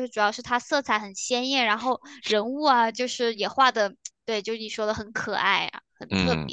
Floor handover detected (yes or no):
yes